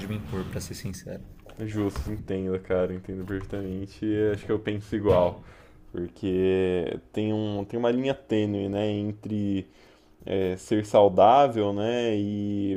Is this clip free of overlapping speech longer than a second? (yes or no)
yes